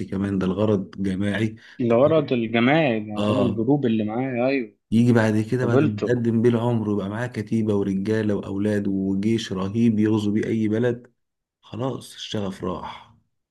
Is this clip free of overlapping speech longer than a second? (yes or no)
yes